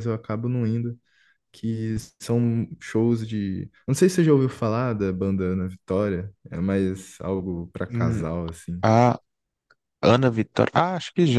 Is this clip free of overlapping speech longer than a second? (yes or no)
yes